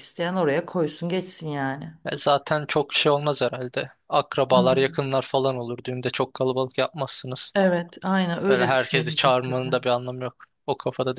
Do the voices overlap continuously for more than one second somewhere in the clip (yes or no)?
yes